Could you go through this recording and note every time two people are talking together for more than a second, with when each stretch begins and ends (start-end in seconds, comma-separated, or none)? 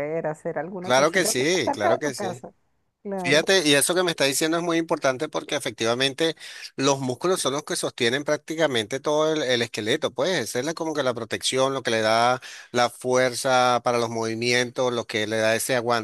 0.8-2.5